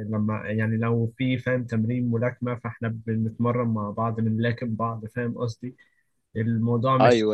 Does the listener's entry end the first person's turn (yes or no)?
no